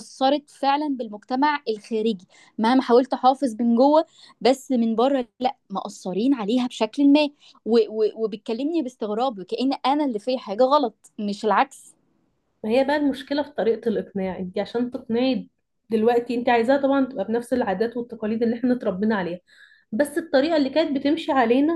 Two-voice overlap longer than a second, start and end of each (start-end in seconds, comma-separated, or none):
none